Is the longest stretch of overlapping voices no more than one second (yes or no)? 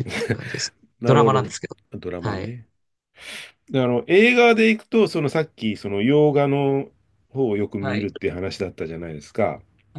yes